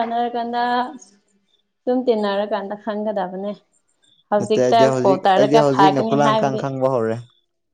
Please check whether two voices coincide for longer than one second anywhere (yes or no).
yes